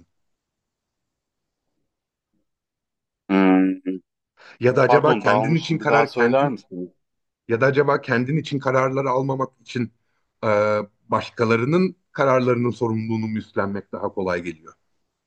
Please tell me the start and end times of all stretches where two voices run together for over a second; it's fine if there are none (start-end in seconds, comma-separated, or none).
4.9-6.6